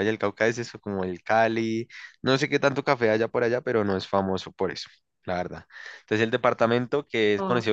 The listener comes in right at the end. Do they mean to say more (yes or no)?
no